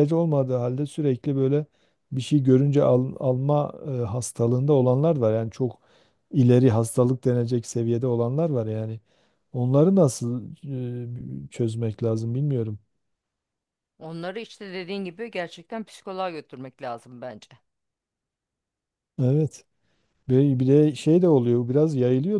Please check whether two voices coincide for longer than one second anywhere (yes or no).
no